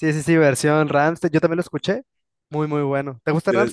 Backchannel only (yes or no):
no